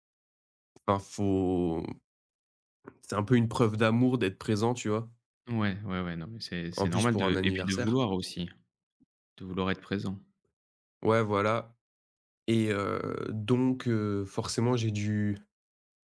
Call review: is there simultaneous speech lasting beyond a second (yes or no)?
yes